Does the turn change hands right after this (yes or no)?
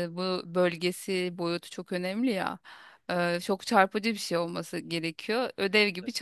no